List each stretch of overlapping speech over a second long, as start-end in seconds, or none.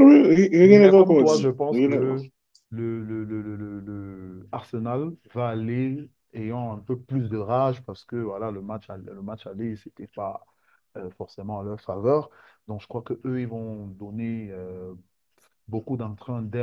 0.6-2.0